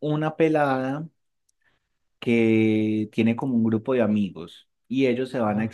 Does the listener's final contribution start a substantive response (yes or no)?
no